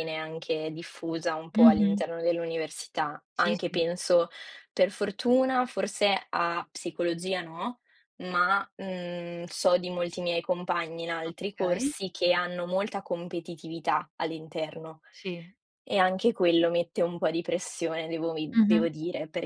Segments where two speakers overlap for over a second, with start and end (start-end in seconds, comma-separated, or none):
none